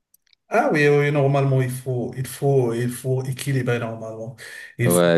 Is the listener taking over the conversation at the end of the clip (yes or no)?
yes